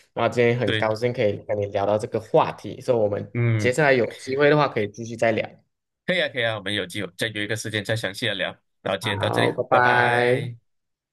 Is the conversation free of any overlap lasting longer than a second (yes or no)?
no